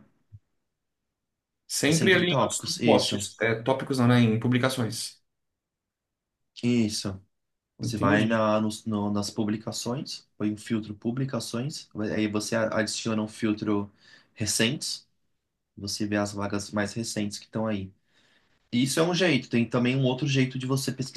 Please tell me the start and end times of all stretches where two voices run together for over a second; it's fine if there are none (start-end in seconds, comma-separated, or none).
1.9-3.3